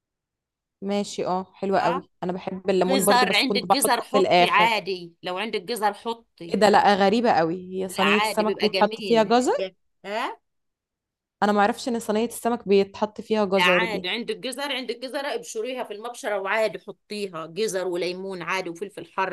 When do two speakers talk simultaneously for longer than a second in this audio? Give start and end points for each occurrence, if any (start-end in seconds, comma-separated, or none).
2.8-4.7, 7.9-9.3